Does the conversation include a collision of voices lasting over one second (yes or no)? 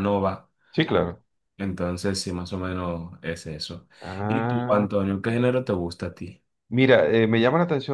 no